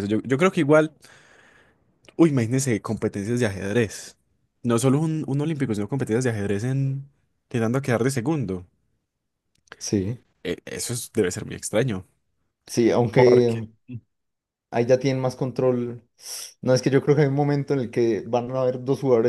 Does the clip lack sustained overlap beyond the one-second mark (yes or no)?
yes